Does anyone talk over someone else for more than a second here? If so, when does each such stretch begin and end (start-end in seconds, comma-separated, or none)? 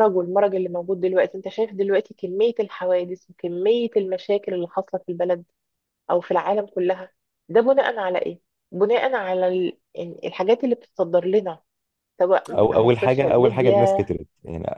12.5-14.1